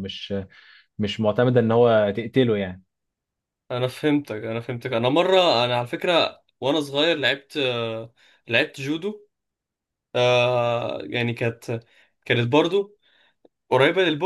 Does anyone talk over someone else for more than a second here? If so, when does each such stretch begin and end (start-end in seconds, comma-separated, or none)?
none